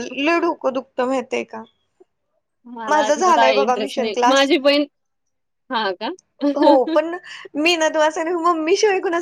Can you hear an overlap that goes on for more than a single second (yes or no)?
yes